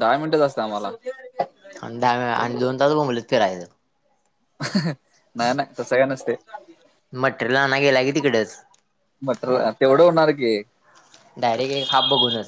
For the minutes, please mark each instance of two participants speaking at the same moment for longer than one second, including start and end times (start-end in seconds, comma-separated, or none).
none